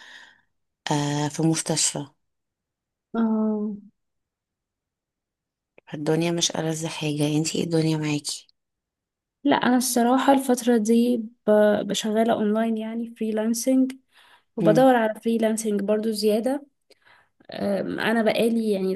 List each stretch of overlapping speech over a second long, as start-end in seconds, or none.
none